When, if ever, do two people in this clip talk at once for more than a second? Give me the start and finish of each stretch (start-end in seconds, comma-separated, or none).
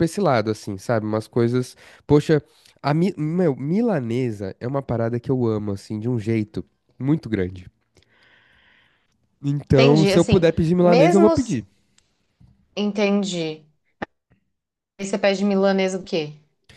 9.7-11.6